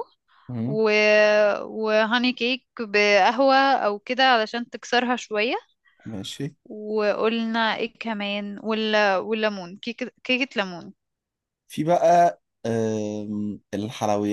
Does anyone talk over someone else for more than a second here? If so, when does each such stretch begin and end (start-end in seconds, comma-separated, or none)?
none